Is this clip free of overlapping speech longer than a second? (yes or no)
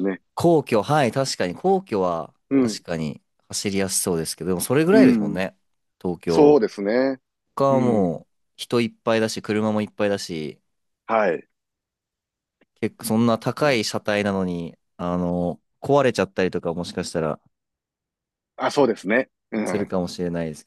yes